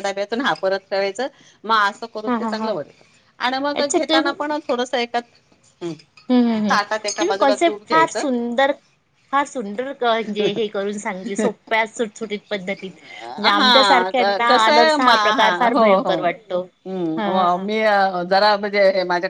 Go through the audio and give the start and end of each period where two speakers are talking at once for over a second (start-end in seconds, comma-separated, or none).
13.6-15.1